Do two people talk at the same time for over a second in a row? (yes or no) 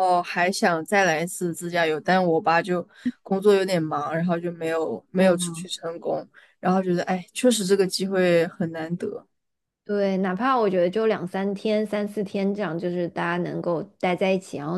no